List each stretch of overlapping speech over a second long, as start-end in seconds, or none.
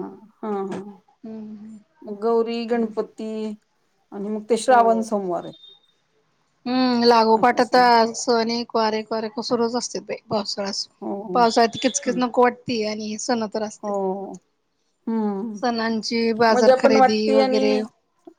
16.5-17.8